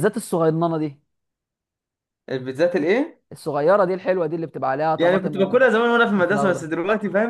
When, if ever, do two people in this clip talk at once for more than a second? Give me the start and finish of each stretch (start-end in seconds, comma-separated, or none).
5.0-6.7